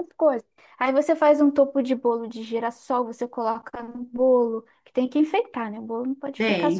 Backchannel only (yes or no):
no